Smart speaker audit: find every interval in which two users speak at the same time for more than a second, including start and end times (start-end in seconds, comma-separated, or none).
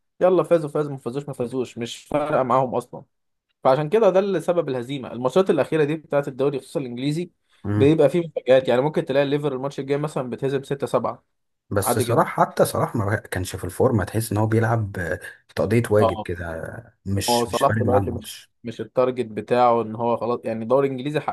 17.3-18.5